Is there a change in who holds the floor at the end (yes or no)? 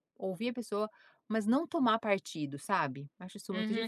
yes